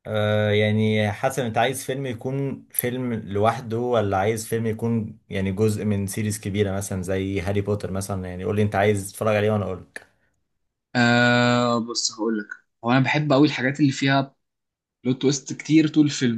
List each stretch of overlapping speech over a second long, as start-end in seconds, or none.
none